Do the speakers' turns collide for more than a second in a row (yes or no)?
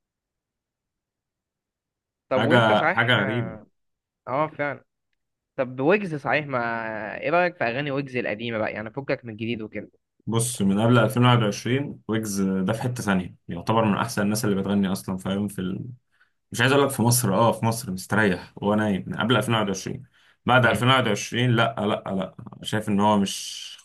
yes